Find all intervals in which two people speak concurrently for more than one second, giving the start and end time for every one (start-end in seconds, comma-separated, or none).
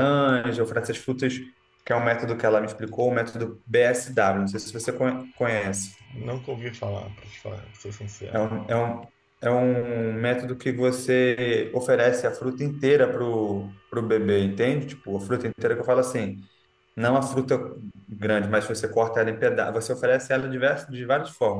none